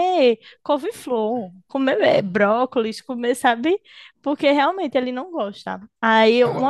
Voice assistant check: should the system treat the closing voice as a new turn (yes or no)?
no